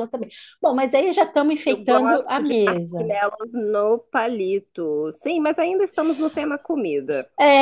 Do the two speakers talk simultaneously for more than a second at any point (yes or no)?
yes